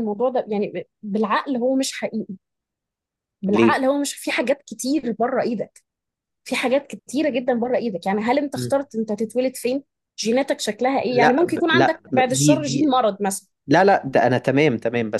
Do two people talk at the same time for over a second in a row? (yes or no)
yes